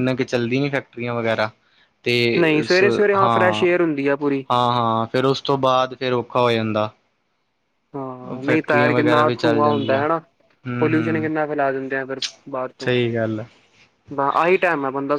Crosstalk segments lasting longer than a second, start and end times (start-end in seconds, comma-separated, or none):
8.5-10.0